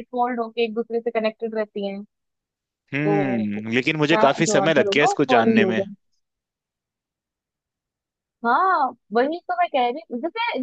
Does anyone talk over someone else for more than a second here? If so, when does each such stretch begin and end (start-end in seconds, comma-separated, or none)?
3.0-5.8